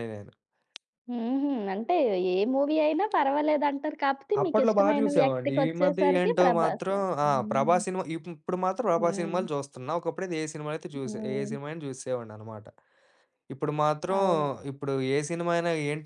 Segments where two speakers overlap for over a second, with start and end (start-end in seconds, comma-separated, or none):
4.4-7.8